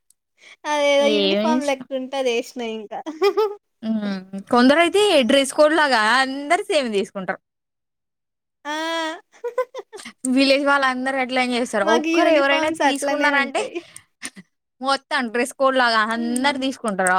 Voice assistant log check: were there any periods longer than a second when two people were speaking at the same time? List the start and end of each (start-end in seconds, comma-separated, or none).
11.9-13.6